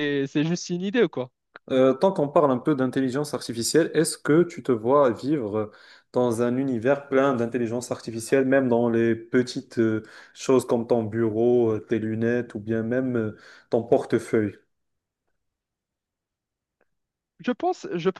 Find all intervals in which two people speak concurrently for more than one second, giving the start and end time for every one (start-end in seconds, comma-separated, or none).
none